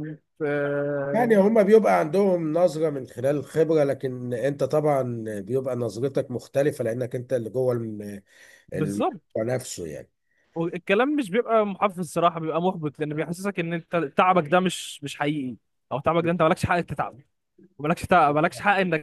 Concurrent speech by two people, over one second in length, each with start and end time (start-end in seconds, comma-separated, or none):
none